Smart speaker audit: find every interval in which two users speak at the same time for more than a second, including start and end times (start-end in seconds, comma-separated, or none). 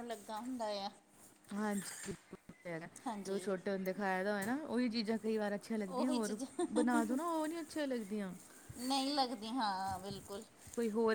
none